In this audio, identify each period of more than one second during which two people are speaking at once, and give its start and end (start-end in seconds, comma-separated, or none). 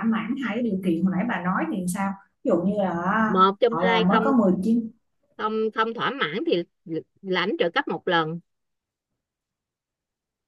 none